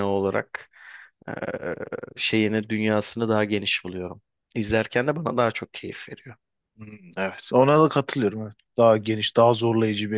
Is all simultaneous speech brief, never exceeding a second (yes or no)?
yes